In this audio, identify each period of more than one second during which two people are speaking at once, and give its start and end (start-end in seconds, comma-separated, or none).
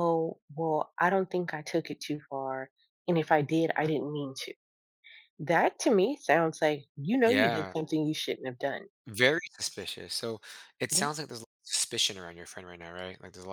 none